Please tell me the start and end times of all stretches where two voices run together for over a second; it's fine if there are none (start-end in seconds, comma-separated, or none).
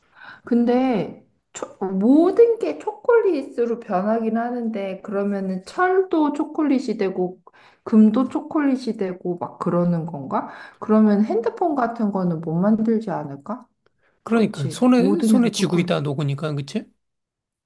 14.3-15.9